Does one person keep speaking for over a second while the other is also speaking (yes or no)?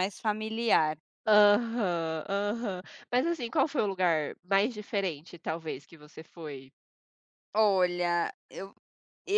no